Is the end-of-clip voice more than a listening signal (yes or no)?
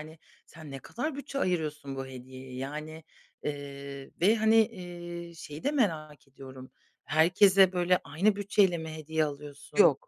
no